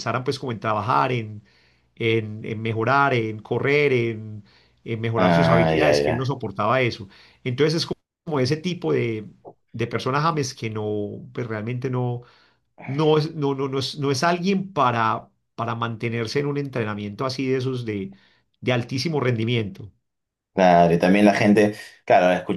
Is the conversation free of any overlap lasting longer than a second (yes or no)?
no